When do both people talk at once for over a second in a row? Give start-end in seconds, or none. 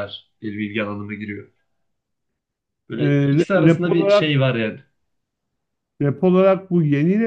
3.0-4.4